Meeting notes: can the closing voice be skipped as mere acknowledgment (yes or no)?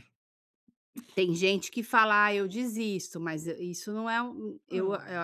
yes